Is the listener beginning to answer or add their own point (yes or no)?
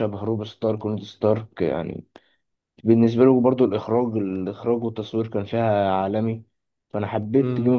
yes